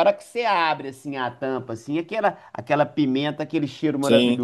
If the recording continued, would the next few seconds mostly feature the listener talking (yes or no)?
no